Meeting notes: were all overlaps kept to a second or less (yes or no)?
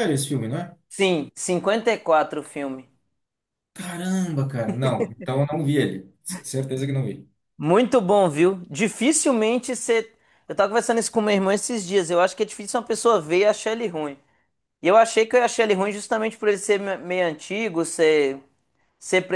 yes